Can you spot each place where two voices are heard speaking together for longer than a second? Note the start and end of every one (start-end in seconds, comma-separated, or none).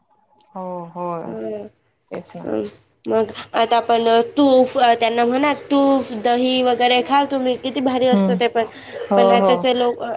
none